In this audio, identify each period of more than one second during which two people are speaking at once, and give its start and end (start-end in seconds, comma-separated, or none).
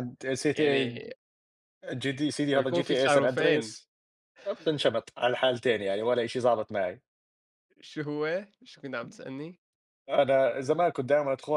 2.5-3.8